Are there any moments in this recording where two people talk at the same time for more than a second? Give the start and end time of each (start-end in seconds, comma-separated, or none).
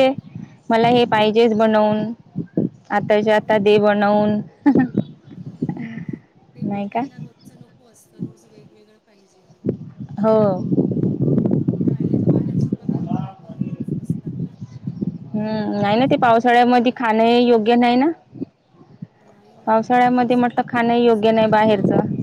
15.3-17.5